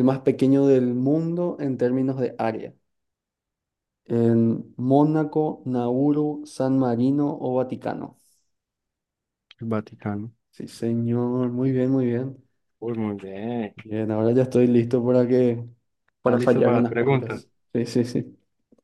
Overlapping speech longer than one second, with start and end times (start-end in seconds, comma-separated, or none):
16.2-17.4